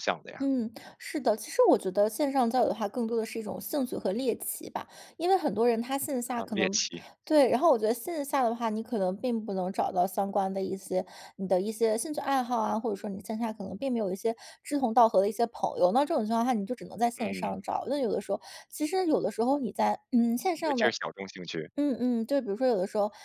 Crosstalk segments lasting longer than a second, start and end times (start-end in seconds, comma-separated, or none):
none